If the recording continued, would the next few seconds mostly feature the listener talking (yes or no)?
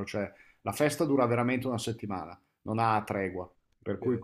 yes